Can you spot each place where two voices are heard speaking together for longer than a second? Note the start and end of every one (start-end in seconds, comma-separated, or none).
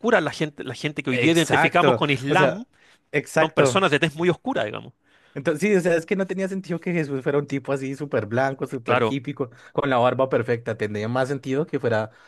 1.1-2.6